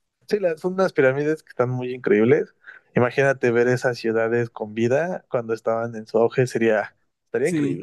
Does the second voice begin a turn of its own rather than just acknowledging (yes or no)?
yes